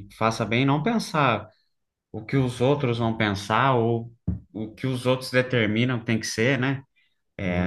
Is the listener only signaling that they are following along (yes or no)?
yes